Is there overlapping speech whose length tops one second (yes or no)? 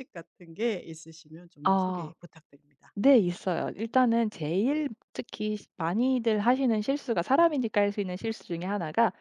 no